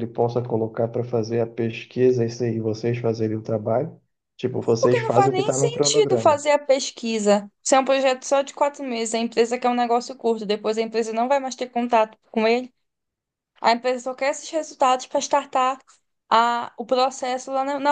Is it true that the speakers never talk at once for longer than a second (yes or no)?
no